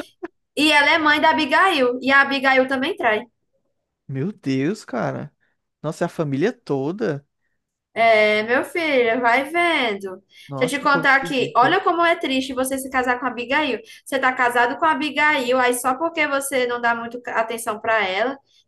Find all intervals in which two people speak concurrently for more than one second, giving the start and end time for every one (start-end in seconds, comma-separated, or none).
10.6-11.8